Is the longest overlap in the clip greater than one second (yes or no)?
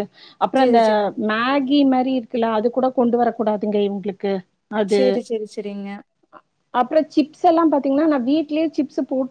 no